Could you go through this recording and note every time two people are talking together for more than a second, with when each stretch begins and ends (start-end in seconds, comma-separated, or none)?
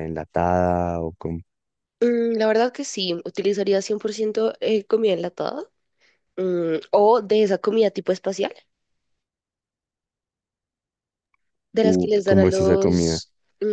11.8-13.2